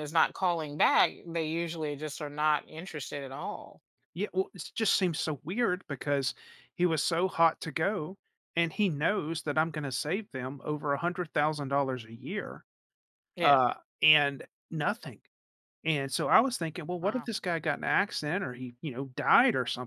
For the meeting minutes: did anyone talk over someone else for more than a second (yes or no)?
no